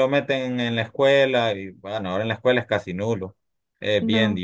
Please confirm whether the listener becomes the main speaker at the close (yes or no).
no